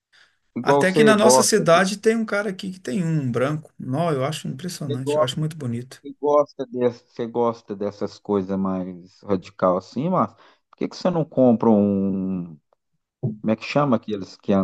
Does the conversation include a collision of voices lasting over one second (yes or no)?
yes